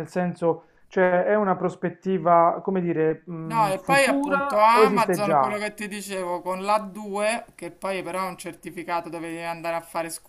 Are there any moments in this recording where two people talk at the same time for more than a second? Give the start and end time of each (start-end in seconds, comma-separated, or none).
3.4-5.6